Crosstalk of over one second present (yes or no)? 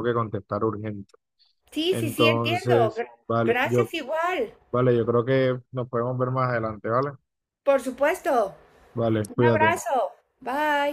yes